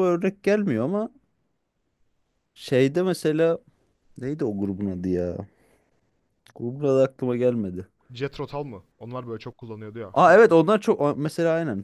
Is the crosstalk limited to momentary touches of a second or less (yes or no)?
yes